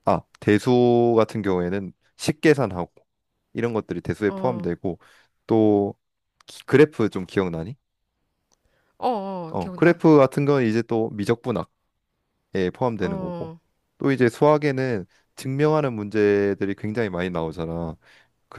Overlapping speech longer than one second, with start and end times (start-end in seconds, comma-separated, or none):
none